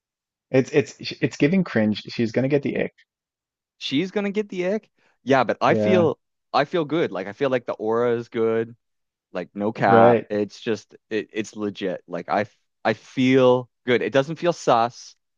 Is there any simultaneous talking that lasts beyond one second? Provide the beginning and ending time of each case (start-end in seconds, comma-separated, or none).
none